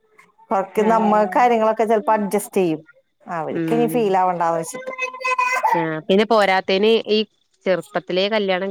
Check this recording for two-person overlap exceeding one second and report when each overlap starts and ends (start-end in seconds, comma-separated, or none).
none